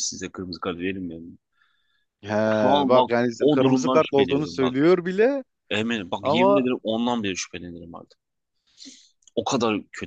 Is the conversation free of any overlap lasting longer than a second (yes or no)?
no